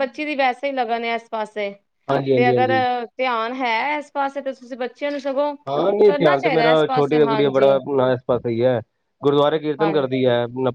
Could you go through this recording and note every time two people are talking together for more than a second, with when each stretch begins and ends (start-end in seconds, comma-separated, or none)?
6.0-7.7